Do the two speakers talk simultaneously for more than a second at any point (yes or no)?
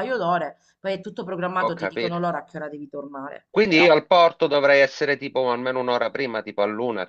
no